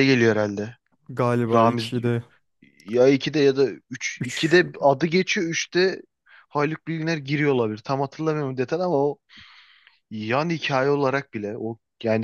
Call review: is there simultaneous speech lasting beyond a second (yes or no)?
no